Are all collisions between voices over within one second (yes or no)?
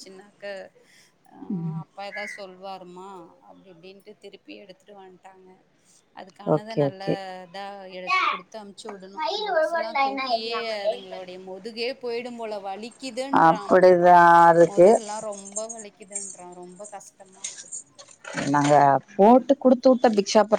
yes